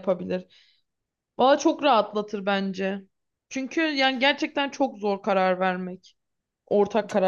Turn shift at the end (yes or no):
yes